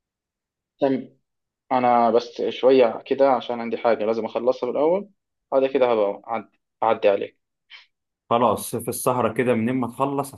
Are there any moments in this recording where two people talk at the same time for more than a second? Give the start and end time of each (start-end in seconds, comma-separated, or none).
none